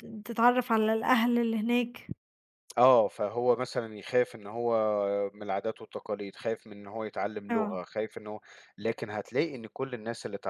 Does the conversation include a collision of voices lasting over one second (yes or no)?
no